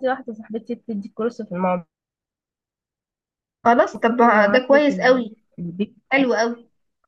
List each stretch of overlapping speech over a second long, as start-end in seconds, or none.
4.0-5.2